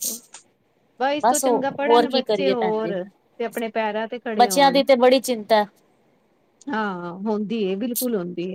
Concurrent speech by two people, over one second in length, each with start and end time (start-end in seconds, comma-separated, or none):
1.2-2.9